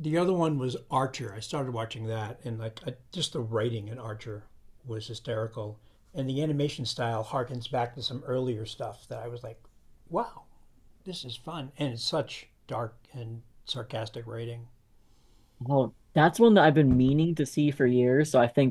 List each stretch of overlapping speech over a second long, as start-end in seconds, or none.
none